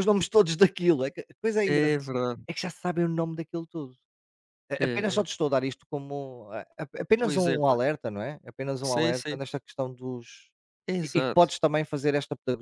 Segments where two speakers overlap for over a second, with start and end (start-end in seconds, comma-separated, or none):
none